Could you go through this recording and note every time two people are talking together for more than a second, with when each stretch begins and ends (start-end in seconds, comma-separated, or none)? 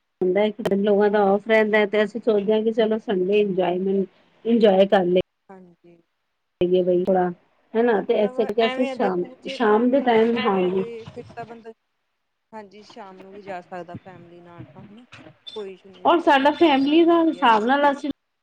8.0-10.8, 16.1-17.8